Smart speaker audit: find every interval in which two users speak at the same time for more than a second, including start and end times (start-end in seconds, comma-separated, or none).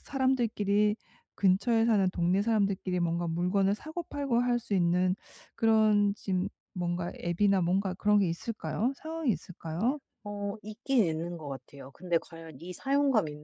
none